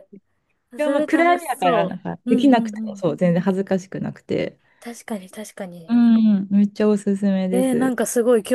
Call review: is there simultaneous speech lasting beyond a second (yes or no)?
yes